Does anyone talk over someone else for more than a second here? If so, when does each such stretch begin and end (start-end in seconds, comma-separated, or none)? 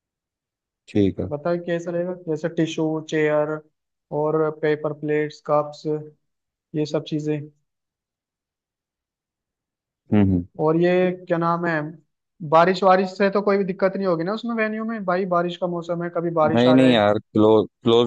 none